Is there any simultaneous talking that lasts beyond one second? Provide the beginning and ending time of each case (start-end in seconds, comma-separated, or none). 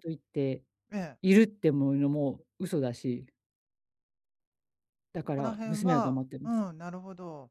5.2-6.6